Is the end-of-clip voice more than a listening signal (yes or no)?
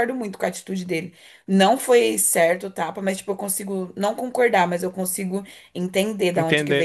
yes